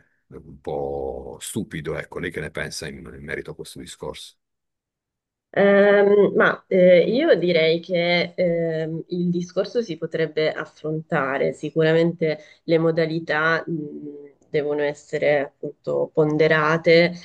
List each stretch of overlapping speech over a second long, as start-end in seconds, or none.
none